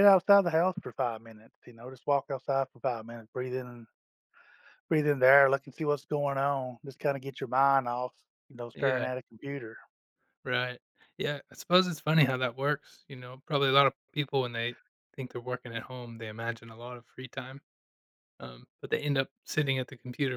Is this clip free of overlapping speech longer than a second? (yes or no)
yes